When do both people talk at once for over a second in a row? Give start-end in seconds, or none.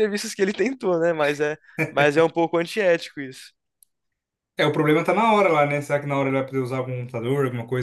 none